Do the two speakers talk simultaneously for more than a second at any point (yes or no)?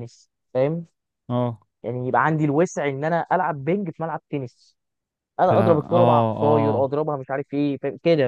yes